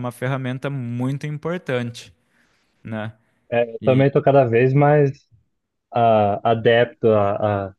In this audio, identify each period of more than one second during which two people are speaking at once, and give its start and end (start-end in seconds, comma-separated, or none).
none